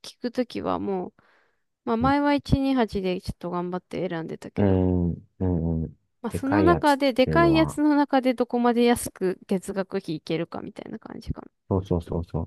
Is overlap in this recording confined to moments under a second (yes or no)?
no